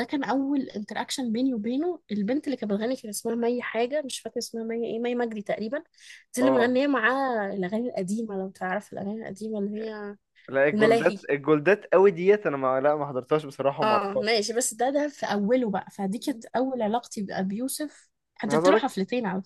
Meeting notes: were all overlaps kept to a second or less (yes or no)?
yes